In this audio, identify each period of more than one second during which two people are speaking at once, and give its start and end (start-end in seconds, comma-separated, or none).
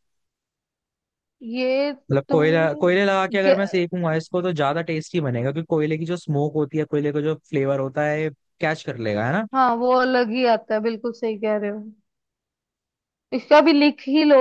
none